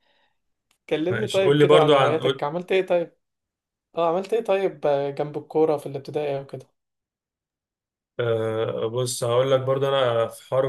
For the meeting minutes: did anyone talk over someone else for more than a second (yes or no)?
yes